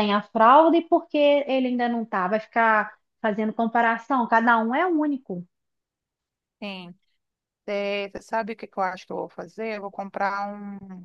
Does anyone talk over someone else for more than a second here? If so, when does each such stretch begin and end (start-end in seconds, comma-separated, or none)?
none